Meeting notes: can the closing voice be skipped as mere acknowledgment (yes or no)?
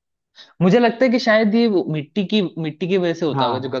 yes